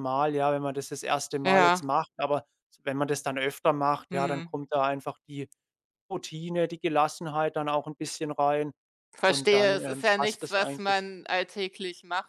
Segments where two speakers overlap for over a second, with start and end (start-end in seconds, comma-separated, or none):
9.2-11.1